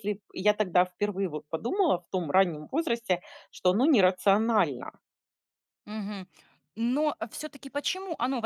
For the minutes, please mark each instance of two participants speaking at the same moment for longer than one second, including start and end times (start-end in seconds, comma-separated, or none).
none